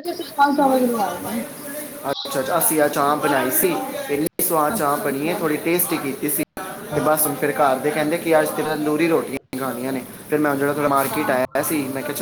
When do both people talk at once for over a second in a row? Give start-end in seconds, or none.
none